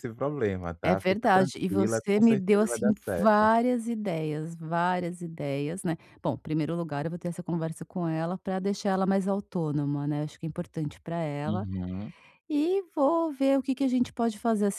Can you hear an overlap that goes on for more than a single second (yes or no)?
yes